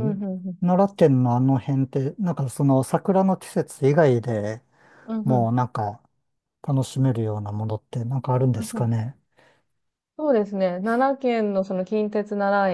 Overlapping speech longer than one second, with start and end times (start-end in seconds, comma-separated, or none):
none